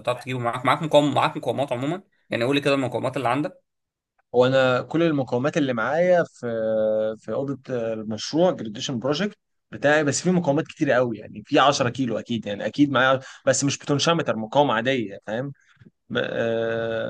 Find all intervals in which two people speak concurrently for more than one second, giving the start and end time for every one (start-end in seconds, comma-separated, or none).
none